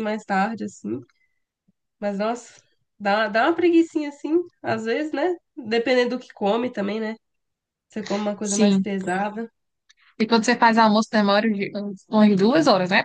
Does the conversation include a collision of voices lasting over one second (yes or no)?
no